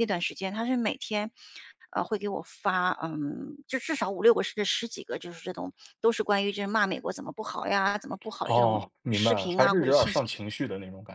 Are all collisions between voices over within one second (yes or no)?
no